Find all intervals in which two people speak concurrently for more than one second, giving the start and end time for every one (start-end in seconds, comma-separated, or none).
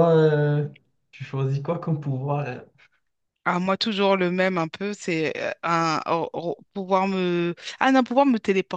none